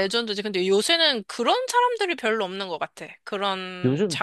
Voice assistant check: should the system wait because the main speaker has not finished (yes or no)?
yes